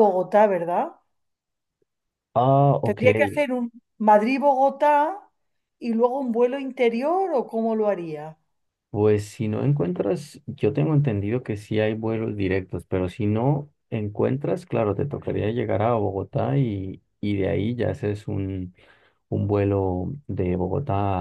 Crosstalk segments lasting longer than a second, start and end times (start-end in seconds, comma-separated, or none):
none